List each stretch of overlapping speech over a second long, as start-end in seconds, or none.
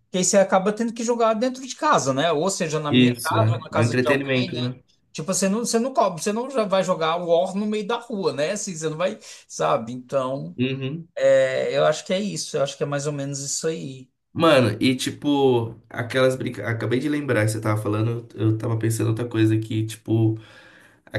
2.9-4.7